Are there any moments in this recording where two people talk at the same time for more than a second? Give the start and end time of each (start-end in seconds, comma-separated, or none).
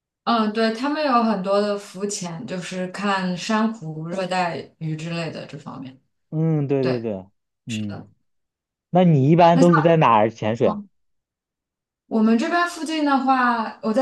none